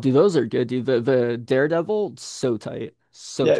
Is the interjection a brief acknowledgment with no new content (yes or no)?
no